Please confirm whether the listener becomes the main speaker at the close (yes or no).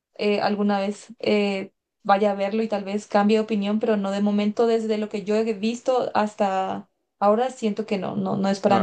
yes